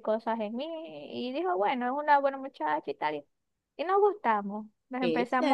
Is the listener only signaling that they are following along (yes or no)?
yes